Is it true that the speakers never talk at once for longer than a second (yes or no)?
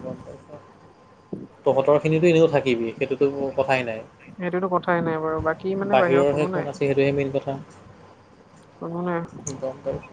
no